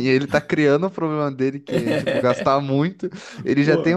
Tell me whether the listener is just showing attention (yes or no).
yes